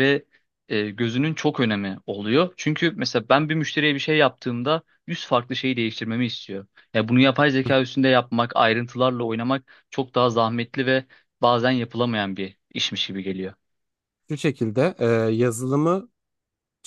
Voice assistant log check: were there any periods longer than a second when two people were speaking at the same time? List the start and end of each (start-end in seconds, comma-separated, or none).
none